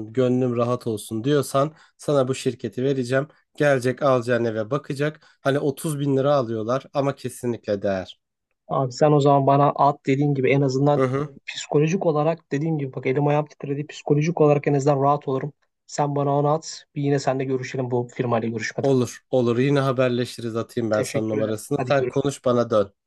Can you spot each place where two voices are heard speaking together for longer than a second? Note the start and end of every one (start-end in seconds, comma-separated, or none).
20.9-22.3